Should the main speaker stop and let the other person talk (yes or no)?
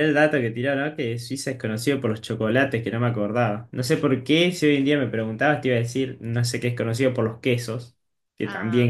yes